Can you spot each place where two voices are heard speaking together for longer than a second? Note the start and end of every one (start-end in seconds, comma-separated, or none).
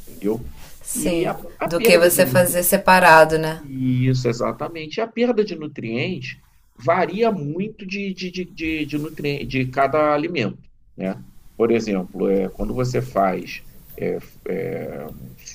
0.9-2.6